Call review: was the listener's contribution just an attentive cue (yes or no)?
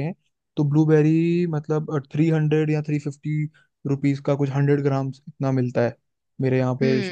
yes